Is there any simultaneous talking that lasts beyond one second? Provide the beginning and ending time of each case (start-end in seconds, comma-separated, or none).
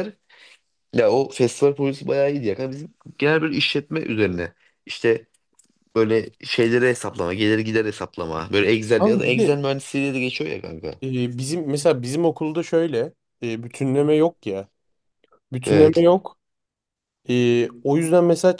none